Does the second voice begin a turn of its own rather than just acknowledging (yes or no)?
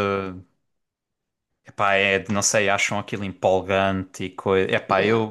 yes